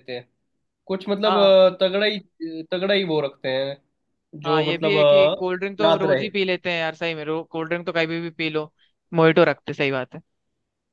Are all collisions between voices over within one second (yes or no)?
no